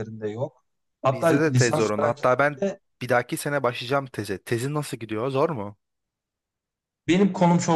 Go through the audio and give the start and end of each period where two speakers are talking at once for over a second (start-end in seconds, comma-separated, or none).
1.1-2.8